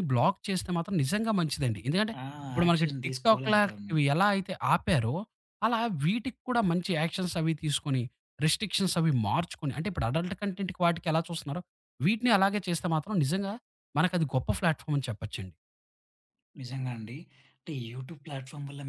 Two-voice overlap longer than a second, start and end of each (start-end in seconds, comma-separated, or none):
2.6-4.0